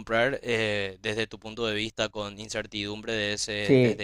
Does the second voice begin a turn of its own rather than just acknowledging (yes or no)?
yes